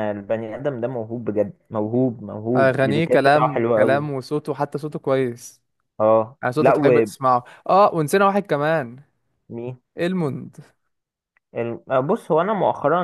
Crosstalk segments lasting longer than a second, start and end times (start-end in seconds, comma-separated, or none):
2.6-4.1